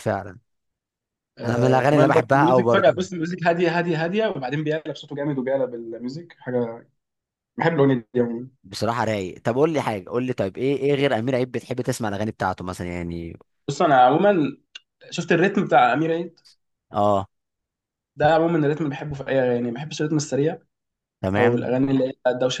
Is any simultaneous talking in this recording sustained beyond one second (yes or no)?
yes